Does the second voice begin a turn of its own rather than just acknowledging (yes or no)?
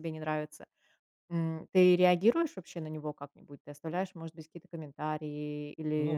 yes